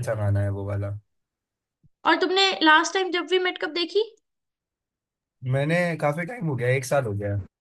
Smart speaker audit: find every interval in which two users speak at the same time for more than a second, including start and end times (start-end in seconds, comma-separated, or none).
none